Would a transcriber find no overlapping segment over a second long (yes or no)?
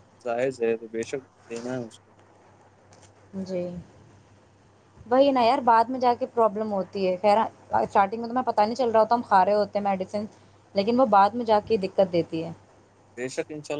yes